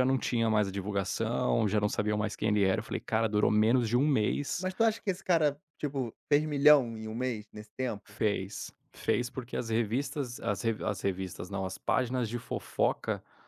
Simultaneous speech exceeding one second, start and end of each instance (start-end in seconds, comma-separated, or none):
none